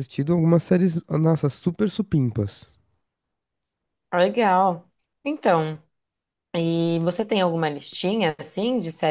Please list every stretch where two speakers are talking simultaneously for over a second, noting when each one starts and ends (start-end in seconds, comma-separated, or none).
none